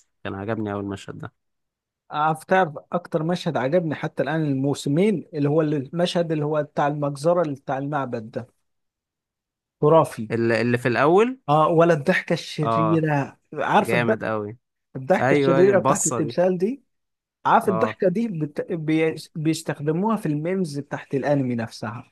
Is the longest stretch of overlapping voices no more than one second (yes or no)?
no